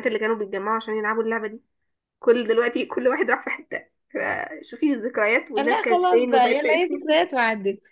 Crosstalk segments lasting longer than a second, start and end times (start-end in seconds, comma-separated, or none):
5.6-6.9